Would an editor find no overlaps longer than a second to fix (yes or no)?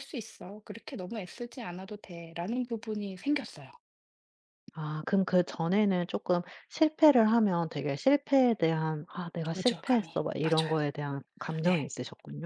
no